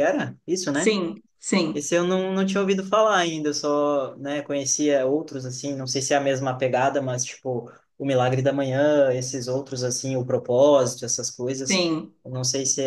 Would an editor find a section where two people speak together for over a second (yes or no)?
no